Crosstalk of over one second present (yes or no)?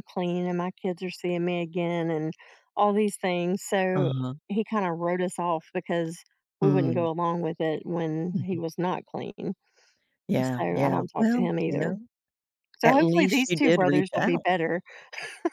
yes